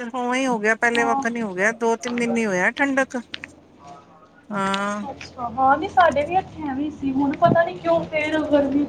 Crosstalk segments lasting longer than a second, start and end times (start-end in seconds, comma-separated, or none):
none